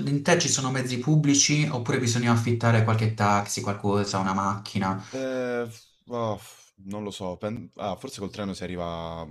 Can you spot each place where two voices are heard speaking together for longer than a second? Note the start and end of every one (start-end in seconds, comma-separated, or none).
none